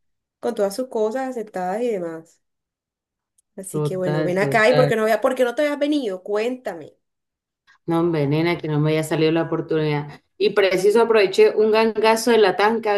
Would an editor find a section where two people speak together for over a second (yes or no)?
yes